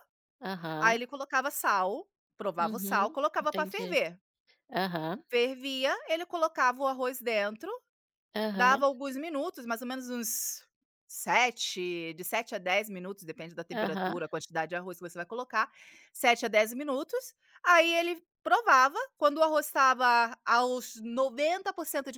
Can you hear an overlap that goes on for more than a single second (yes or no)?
yes